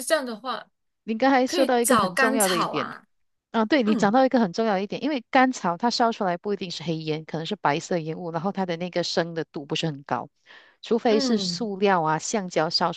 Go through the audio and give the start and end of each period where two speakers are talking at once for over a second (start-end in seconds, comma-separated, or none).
1.4-2.9